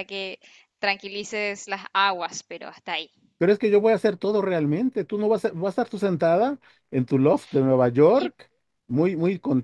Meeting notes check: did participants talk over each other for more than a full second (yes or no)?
no